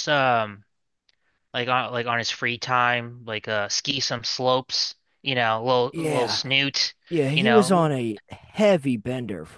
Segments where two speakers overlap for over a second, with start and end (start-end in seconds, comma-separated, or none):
none